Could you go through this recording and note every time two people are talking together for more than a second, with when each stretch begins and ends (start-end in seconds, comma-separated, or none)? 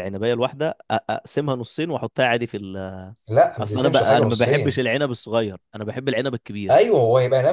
3.6-4.8